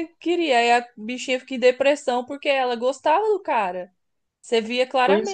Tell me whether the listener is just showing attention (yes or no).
yes